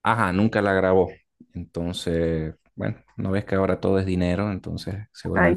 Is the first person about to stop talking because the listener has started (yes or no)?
no